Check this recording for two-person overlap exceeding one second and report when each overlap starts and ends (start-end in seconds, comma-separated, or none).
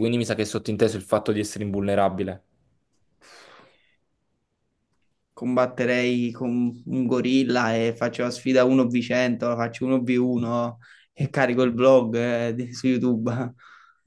none